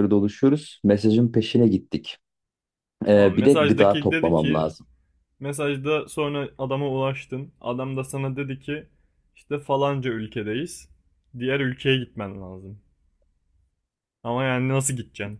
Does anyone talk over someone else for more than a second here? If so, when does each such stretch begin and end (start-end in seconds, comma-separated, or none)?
3.1-4.7